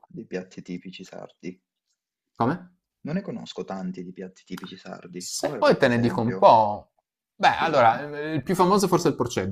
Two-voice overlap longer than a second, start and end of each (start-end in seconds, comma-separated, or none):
5.2-6.5